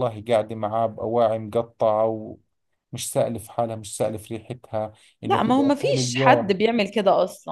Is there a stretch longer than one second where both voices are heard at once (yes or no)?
yes